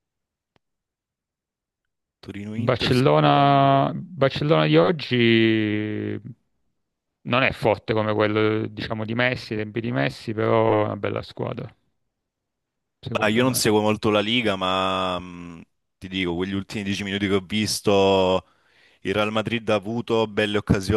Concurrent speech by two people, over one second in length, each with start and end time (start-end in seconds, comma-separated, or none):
2.6-3.9